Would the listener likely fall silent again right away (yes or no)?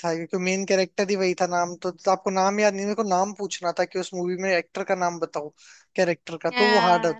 no